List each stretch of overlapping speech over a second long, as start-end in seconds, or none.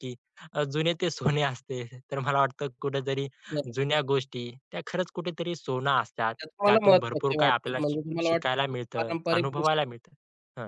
6.4-9.8